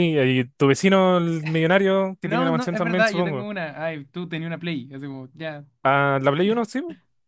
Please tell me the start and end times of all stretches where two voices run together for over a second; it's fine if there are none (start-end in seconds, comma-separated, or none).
2.2-3.5